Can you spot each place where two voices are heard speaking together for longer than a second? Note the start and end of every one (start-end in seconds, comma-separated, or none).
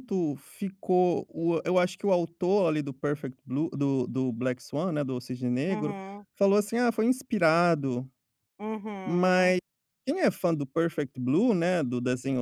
none